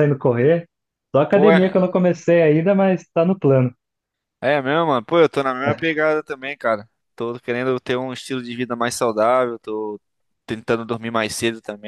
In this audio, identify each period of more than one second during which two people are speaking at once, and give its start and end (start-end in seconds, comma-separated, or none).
none